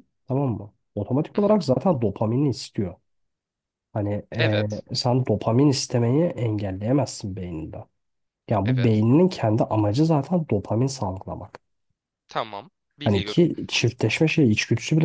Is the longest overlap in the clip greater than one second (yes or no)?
no